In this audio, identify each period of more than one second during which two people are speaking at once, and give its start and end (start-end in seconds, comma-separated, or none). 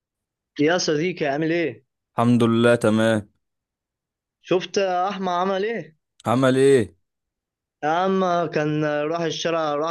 none